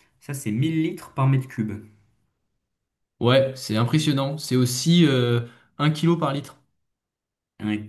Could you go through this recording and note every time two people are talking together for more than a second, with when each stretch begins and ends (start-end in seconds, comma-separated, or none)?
none